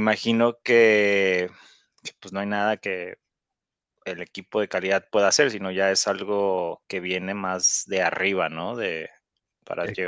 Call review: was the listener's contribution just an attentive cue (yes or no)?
yes